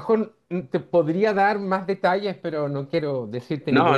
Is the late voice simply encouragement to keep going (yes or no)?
no